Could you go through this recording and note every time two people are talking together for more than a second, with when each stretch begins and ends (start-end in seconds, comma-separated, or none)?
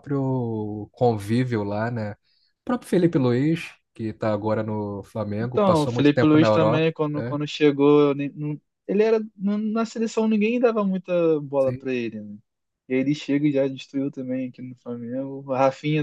5.4-7.4